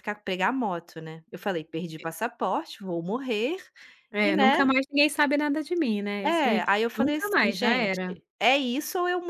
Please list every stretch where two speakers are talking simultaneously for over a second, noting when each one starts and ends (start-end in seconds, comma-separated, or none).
6.2-8.0